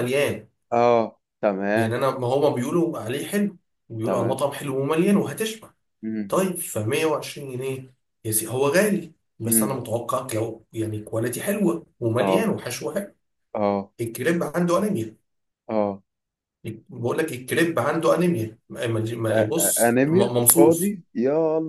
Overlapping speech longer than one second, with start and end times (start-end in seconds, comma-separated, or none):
19.3-20.9